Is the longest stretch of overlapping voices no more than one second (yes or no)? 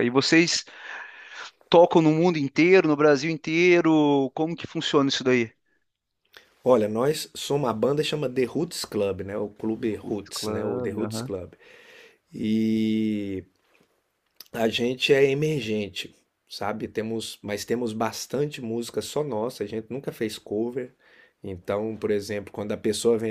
no